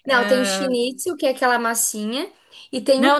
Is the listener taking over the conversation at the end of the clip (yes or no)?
yes